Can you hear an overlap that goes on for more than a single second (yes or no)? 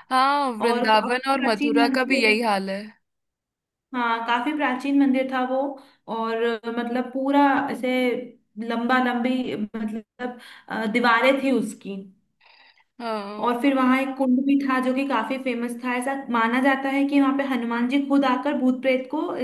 yes